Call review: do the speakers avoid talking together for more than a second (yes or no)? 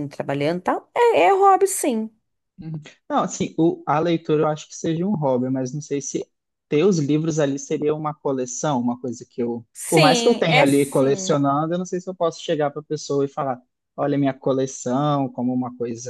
no